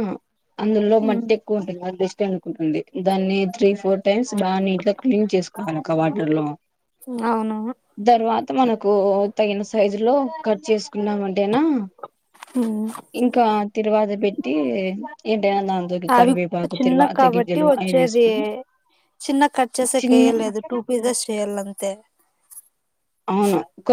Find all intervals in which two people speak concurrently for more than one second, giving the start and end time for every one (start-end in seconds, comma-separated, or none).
16.2-18.2